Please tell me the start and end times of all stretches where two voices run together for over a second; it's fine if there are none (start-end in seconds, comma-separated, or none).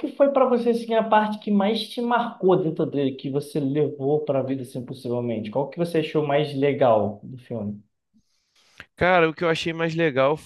none